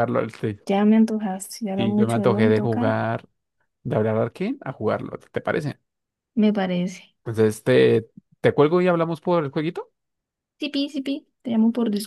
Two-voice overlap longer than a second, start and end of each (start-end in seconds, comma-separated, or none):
1.8-3.0